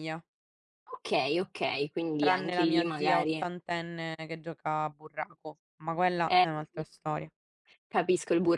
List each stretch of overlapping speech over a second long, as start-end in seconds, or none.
2.2-3.5